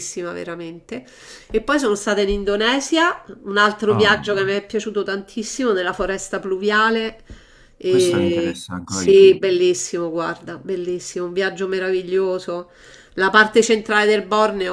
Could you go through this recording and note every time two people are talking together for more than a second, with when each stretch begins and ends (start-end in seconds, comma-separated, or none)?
7.8-9.4